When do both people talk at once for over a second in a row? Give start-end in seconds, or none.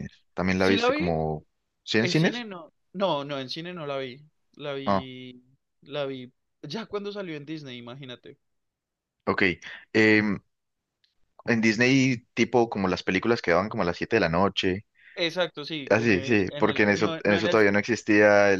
15.9-17.6